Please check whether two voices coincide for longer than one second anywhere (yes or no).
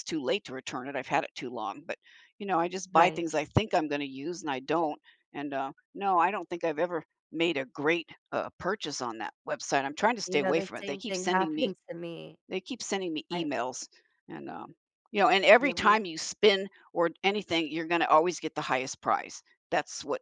yes